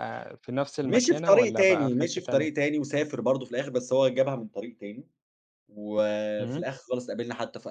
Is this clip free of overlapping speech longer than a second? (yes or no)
no